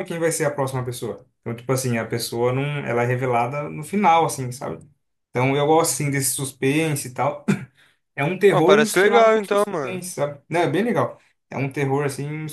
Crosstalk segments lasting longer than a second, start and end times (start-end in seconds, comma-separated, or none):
8.5-10.0